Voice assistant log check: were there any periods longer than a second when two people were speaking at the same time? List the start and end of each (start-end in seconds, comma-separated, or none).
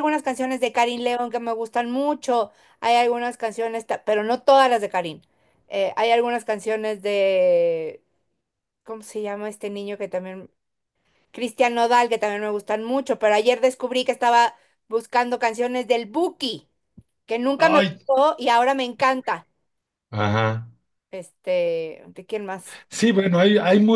none